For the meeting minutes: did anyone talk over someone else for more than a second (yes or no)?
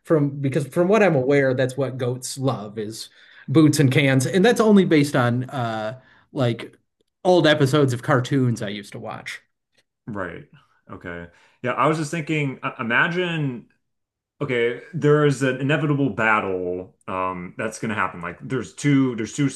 no